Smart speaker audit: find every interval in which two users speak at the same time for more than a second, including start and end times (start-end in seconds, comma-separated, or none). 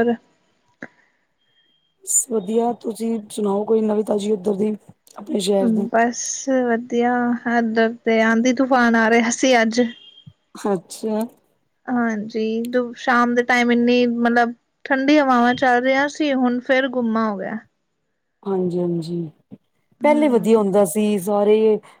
none